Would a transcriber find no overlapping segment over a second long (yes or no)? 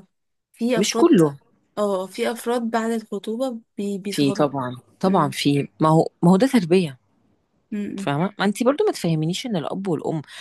yes